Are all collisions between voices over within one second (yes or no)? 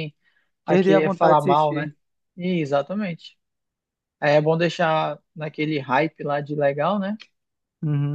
no